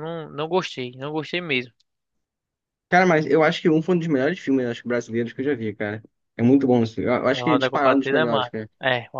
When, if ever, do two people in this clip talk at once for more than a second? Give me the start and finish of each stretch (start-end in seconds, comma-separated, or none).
7.3-8.7